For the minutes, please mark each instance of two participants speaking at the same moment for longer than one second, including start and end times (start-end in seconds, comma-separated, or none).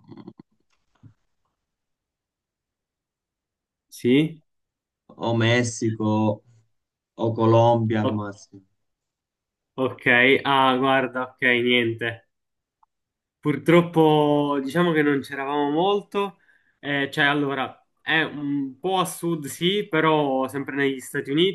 none